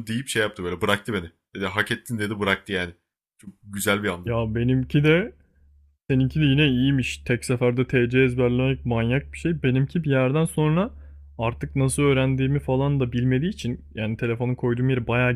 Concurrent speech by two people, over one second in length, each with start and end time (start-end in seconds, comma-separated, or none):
none